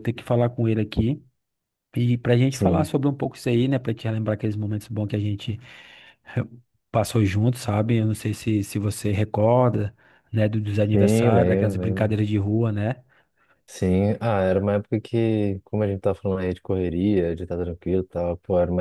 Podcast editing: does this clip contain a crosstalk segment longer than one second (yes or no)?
yes